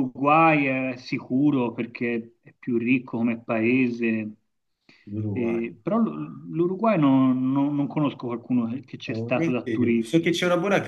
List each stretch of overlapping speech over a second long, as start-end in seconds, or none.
9.0-10.3